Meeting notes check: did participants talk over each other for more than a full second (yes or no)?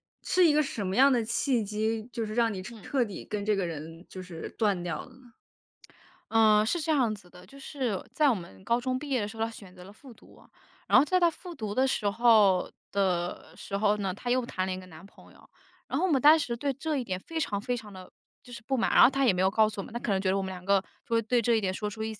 no